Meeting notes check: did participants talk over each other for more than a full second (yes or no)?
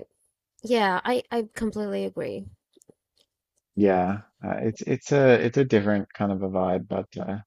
no